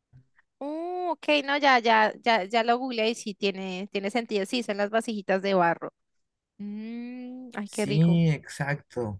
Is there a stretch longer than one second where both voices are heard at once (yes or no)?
no